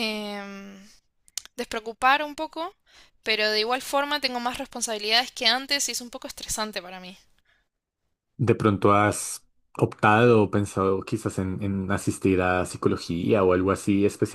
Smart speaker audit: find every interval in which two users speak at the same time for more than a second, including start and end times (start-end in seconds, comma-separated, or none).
none